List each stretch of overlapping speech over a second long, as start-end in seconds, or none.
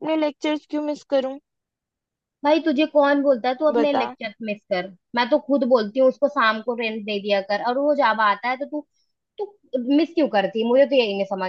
none